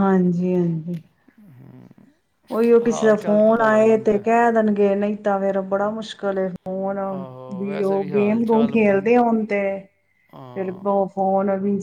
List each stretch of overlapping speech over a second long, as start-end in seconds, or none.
2.9-4.3, 7.6-9.1